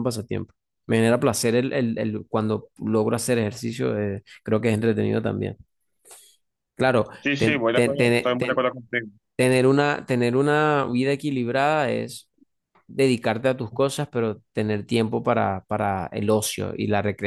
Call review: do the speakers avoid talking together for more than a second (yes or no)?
no